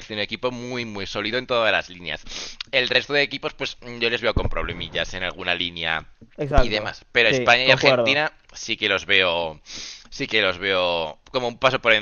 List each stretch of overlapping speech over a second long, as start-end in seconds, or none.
6.6-8.3